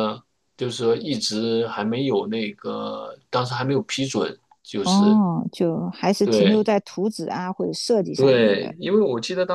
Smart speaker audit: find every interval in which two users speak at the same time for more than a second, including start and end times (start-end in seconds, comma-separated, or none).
none